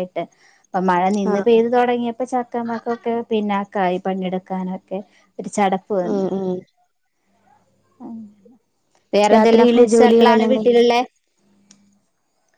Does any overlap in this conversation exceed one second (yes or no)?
yes